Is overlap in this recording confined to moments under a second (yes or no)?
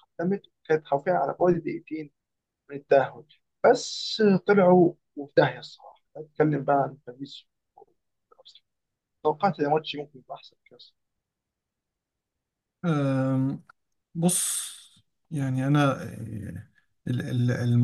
yes